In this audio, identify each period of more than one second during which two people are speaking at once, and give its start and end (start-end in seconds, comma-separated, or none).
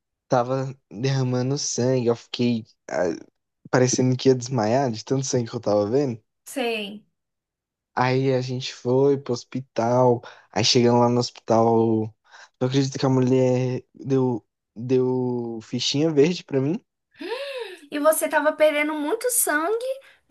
none